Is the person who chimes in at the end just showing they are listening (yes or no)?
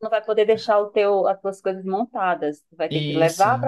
yes